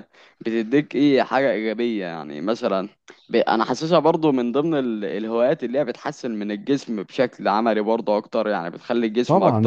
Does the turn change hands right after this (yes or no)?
yes